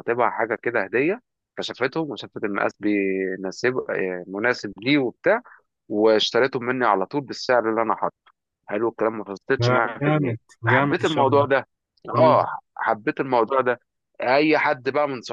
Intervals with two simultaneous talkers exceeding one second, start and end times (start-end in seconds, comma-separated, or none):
9.6-11.5